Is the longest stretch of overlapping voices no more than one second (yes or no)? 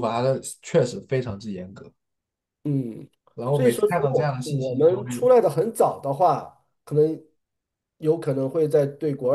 no